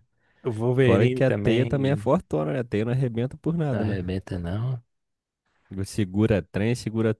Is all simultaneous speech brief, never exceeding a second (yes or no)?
no